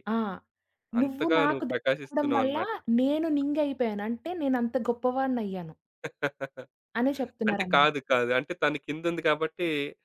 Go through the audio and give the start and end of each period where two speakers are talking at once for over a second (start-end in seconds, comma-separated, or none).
1.0-2.6